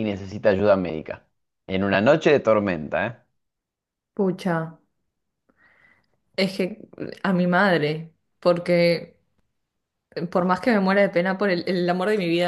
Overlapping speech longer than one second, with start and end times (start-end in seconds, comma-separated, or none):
none